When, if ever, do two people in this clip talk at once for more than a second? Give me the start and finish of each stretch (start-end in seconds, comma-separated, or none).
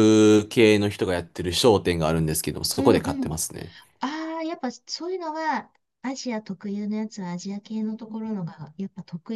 none